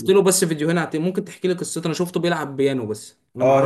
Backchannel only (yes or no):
no